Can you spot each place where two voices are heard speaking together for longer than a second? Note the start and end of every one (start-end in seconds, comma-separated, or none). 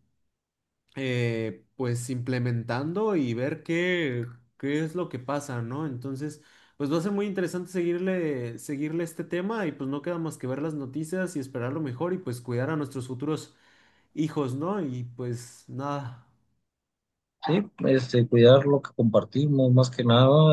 none